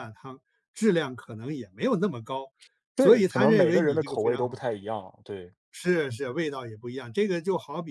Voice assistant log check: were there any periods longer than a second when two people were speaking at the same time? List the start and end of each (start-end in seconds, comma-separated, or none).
3.0-4.6